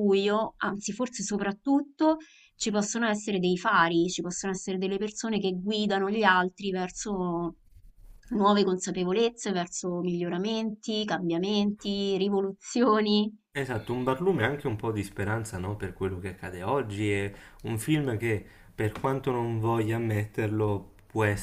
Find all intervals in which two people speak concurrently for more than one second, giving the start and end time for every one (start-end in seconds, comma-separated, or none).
none